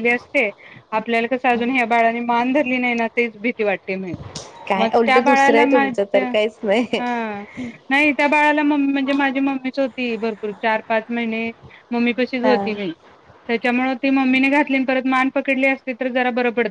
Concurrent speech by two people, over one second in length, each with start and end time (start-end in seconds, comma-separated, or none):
4.8-6.3